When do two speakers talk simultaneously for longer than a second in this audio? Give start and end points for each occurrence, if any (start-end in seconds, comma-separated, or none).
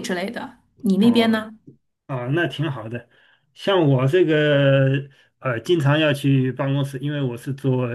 none